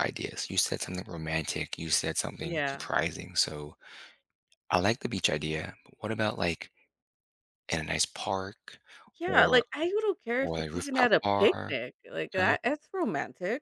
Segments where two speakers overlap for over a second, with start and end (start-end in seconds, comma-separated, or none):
10.4-11.8